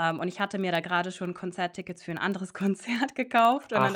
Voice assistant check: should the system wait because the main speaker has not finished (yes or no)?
yes